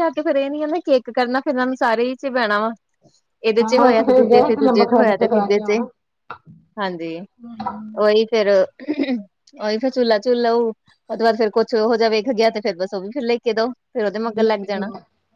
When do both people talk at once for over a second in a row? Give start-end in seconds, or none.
3.6-5.8